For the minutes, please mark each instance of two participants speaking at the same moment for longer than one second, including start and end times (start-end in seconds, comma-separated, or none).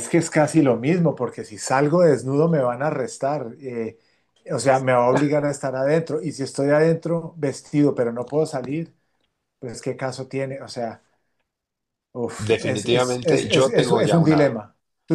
12.5-14.6